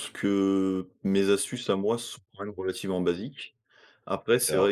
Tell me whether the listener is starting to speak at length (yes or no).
no